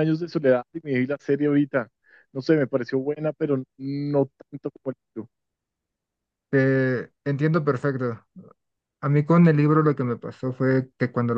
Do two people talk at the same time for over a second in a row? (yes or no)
no